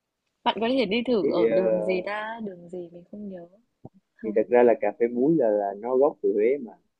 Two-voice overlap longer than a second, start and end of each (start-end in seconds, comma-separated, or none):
none